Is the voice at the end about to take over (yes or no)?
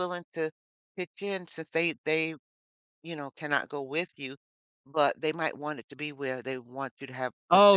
yes